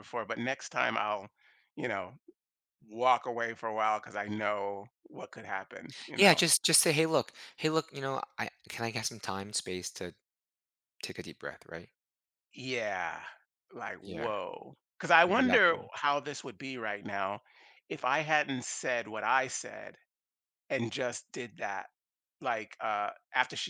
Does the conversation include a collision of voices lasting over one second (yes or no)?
no